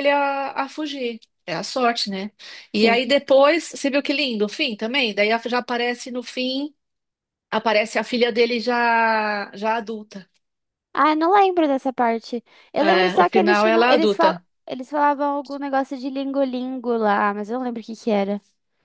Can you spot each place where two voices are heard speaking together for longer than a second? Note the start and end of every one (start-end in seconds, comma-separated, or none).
12.8-14.4